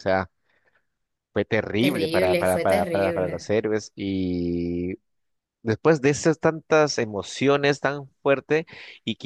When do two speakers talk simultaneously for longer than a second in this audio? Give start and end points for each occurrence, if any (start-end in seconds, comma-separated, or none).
1.8-3.5